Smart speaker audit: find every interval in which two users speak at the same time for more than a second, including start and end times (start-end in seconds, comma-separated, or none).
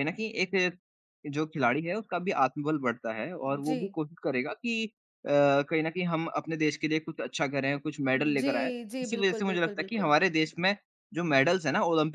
8.4-10.1